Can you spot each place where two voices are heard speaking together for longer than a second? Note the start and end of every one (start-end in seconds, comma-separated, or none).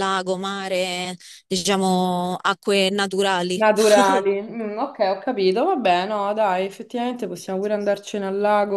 none